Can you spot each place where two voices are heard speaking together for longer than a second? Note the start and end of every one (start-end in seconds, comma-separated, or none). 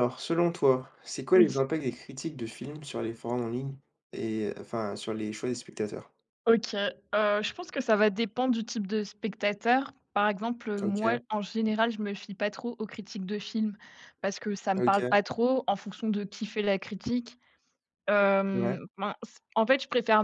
none